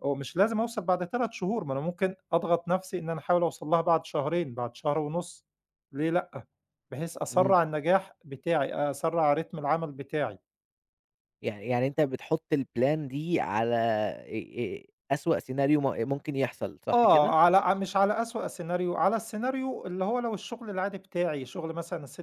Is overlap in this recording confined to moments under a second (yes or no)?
yes